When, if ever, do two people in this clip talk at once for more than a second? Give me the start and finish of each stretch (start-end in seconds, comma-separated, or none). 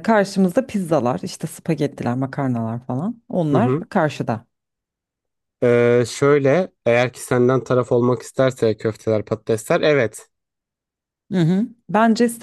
none